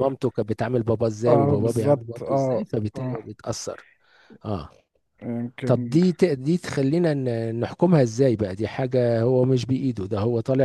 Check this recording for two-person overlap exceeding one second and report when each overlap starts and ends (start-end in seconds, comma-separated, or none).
1.3-3.3